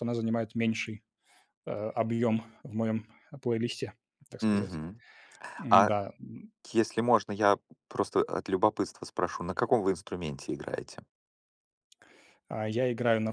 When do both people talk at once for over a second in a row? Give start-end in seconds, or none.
none